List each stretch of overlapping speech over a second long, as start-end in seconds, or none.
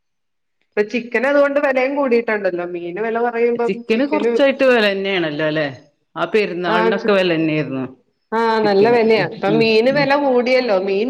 none